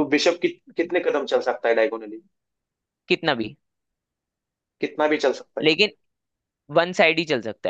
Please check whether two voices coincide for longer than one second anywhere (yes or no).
no